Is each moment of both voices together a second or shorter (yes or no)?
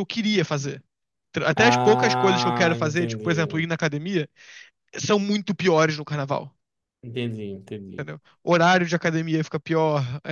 no